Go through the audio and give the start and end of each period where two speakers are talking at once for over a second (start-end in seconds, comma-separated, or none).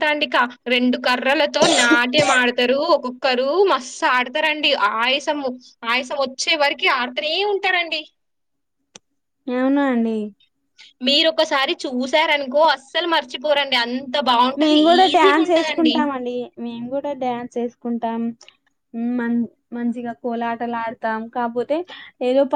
none